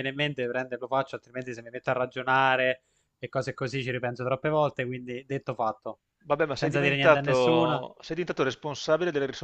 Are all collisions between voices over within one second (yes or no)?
no